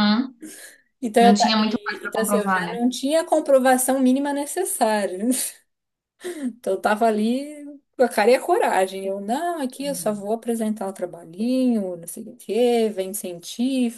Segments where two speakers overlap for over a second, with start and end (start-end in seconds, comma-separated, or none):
1.2-2.8